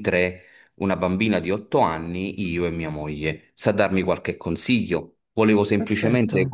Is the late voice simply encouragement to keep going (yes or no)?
yes